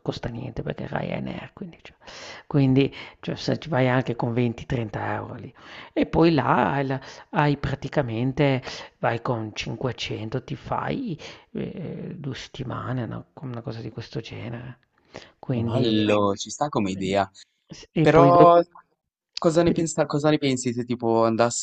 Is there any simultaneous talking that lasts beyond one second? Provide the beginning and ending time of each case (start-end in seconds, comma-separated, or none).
none